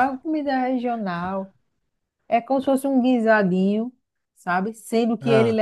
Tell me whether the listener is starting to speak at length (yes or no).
no